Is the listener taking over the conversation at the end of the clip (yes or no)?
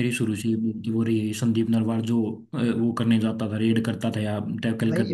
yes